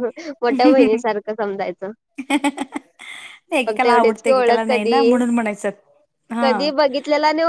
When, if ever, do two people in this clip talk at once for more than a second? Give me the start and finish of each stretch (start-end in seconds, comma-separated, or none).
3.7-5.0